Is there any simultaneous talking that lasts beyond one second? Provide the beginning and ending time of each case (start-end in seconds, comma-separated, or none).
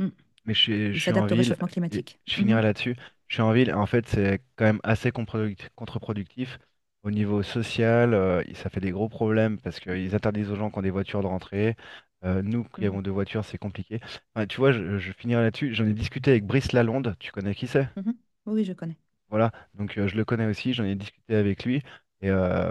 0.9-2.6